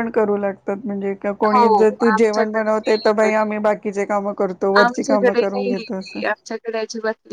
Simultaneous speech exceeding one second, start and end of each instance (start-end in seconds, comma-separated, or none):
1.5-3.3